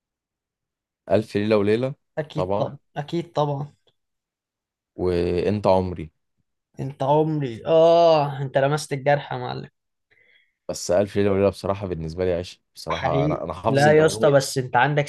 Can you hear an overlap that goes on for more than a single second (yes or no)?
yes